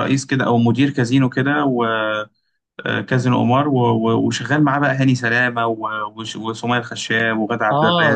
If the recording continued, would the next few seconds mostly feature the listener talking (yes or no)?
yes